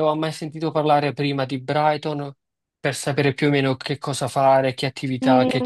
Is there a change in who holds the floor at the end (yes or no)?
yes